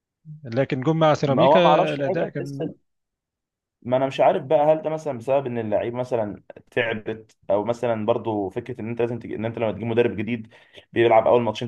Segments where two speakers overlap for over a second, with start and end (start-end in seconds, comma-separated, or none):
1.2-2.6